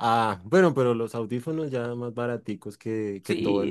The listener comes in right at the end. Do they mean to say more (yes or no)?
yes